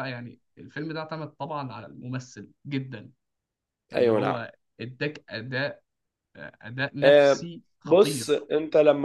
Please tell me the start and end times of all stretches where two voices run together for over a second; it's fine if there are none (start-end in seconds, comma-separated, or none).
7.0-8.5